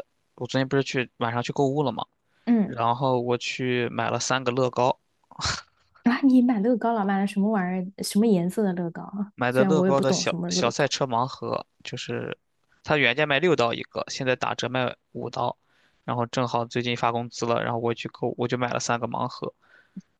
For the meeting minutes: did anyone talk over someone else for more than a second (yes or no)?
yes